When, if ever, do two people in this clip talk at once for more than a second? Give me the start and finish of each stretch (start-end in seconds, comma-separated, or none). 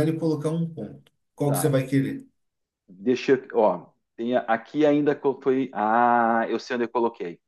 none